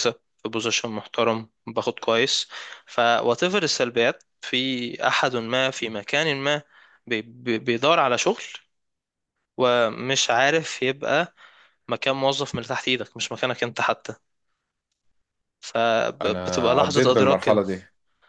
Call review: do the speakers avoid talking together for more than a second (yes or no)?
no